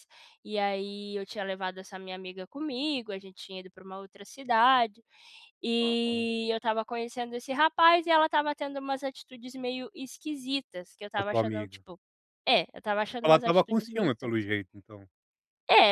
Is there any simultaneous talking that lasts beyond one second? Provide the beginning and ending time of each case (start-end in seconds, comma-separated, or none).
13.1-14.5